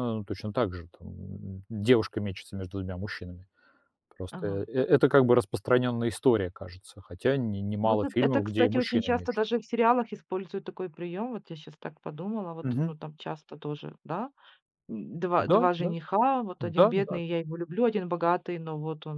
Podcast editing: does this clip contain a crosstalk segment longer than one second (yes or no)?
yes